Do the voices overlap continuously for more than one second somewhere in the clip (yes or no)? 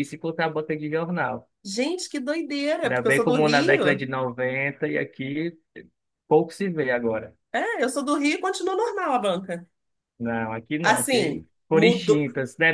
yes